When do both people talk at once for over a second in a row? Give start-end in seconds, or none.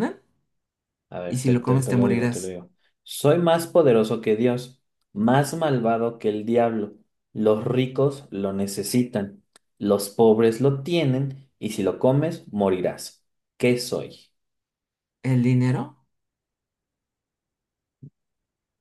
1.3-2.6